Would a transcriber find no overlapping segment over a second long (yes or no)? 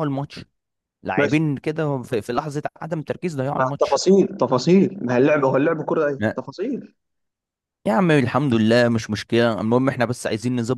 yes